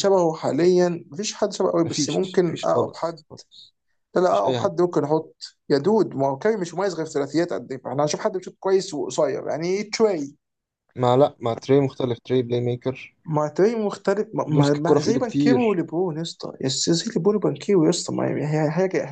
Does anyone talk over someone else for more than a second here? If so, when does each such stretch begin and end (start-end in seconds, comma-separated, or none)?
1.8-3.2, 14.5-15.8